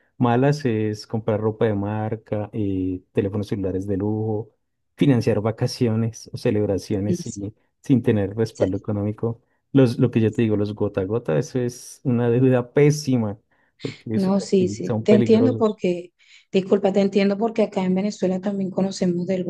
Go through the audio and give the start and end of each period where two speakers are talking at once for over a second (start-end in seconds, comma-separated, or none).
14.1-15.8